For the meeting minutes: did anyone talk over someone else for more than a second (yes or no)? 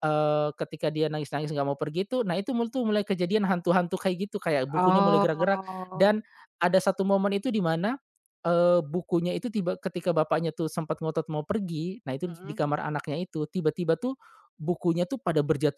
yes